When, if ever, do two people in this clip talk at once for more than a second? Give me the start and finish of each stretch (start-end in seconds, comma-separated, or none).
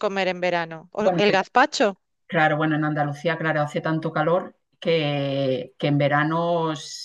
none